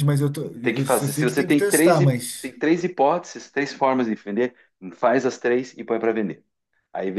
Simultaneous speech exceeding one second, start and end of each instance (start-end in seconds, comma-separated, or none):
0.6-2.5